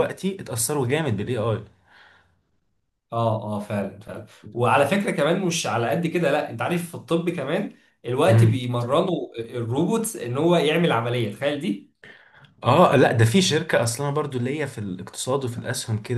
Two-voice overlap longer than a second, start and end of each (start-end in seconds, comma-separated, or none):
none